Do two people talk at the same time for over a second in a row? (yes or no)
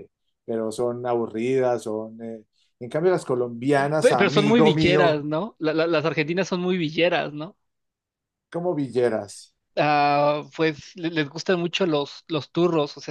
yes